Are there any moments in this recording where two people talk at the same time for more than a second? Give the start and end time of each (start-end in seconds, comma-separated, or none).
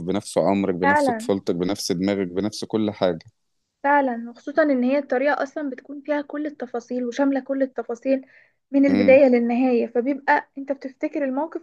none